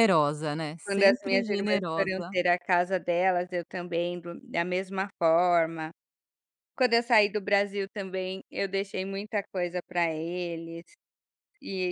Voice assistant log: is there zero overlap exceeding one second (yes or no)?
no